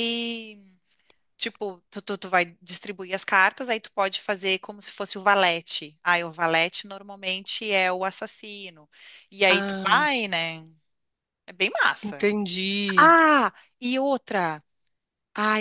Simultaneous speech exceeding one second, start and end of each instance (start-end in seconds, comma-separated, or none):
none